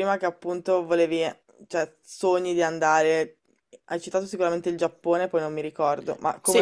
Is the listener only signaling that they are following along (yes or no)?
no